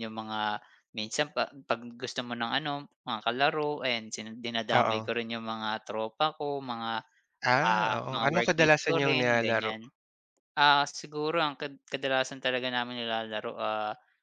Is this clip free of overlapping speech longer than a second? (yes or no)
no